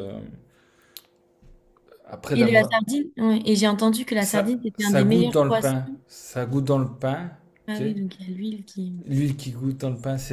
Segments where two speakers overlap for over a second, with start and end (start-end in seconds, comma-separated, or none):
4.2-5.7